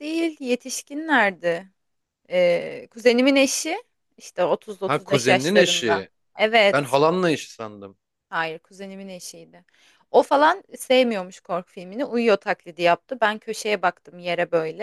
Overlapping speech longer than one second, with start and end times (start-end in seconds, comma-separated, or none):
4.9-6.1